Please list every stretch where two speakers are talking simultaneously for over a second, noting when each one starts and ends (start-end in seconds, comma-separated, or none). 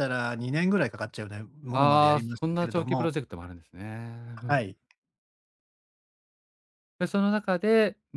1.7-3.1